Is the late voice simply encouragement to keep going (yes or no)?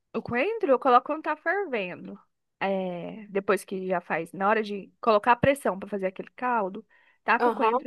yes